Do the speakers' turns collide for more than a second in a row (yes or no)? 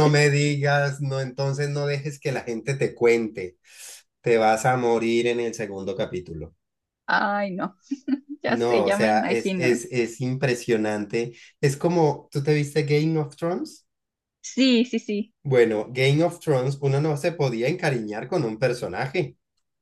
yes